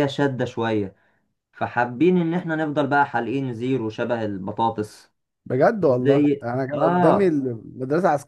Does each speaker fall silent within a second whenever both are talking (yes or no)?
no